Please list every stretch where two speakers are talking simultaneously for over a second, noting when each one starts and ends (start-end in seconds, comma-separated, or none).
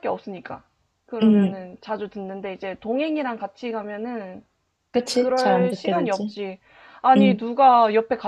5.1-6.3